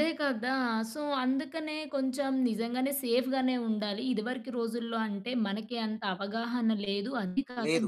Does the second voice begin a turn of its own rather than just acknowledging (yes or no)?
no